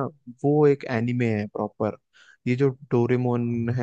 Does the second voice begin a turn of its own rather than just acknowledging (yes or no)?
no